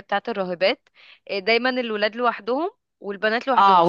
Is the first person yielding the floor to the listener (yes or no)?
yes